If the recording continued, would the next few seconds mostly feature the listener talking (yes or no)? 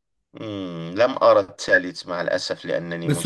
yes